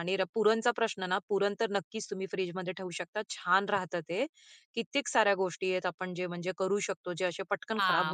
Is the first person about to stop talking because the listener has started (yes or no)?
yes